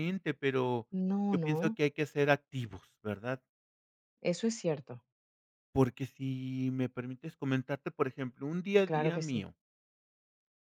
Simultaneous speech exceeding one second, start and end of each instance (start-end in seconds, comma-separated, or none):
none